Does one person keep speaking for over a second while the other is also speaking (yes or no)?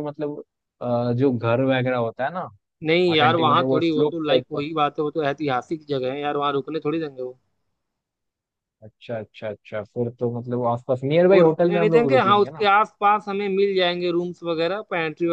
yes